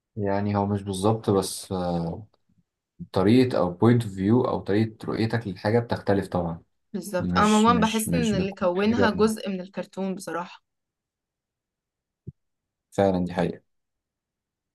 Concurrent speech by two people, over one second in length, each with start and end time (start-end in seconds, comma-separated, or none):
7.2-9.1